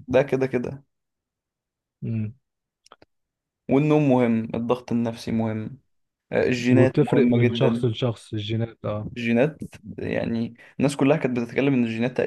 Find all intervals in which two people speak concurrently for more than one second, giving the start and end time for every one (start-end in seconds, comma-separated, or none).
6.7-8.0